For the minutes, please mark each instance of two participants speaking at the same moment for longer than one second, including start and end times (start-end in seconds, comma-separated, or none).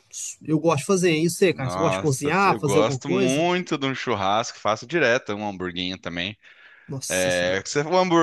1.5-3.5